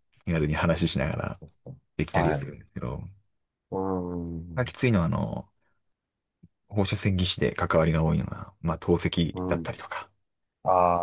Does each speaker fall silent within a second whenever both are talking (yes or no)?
yes